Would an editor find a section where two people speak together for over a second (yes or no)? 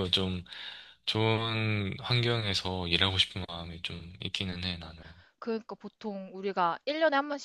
no